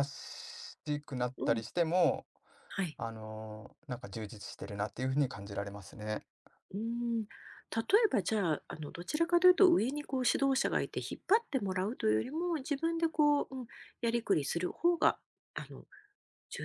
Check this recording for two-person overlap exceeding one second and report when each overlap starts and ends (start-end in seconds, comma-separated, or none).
none